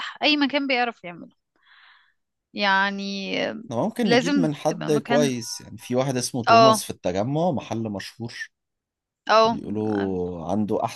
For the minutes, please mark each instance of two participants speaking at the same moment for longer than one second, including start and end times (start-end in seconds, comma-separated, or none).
4.0-5.3